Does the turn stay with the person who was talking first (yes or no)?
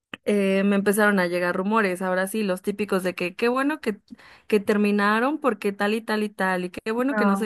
yes